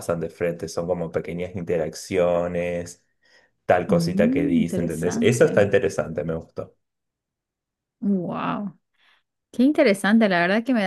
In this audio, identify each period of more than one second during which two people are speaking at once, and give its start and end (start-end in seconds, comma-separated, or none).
3.9-5.7